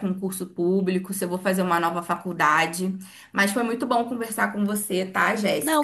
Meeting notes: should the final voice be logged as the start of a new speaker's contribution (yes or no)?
yes